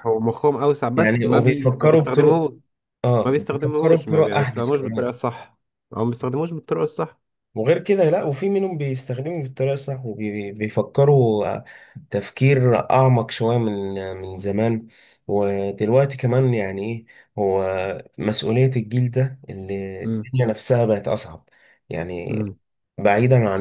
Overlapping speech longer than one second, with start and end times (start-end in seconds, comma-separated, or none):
1.0-2.4, 3.2-5.1